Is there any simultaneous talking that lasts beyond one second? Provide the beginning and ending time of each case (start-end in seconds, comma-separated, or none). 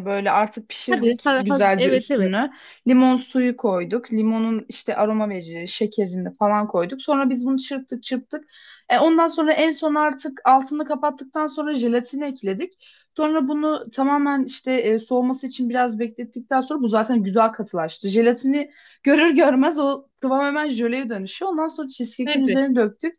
0.9-2.3